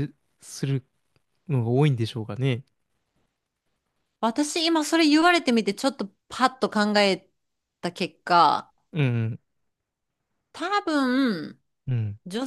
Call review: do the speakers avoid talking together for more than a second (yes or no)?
yes